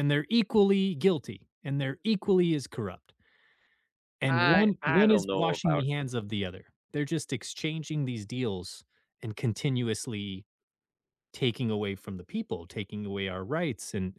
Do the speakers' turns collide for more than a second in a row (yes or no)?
yes